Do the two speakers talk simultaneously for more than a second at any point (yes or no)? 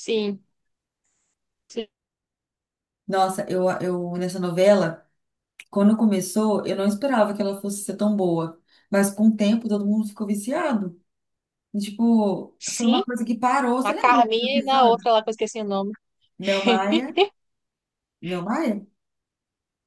yes